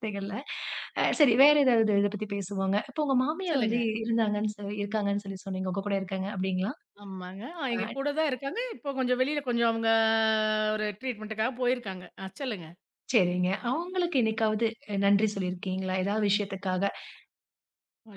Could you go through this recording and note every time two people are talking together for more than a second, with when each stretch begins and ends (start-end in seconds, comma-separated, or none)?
none